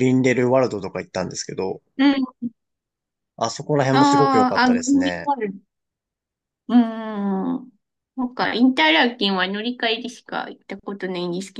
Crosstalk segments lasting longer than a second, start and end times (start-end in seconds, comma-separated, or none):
3.9-5.3